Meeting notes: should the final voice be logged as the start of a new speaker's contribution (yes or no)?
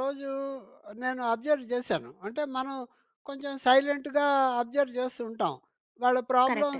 no